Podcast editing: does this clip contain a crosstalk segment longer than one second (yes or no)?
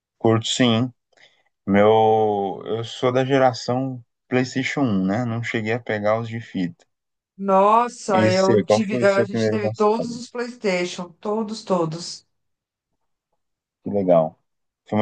yes